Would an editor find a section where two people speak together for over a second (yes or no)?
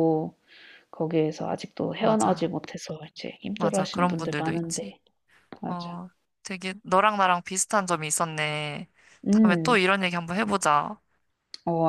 yes